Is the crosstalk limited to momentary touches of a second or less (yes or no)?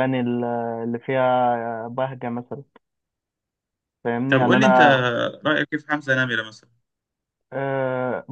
yes